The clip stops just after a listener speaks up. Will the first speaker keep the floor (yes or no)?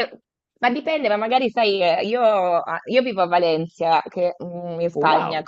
yes